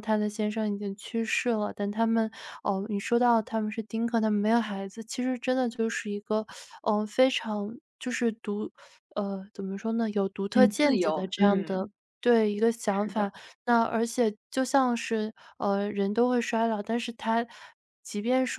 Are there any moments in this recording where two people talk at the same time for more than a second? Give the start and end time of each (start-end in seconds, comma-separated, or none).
10.5-11.9